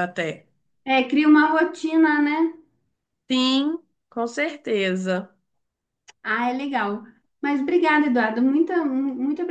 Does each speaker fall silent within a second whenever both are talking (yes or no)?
yes